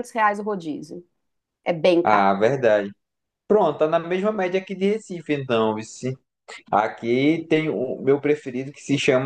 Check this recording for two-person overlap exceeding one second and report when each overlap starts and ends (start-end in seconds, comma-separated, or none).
none